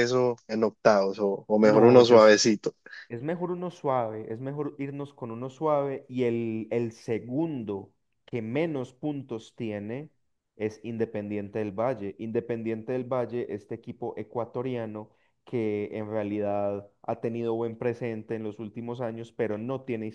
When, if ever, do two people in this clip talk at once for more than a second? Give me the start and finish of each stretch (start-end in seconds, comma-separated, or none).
none